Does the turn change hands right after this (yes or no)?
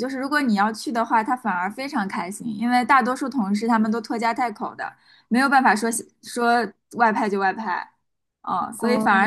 no